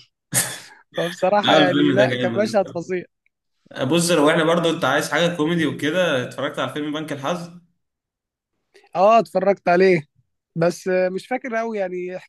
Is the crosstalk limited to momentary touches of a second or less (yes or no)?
no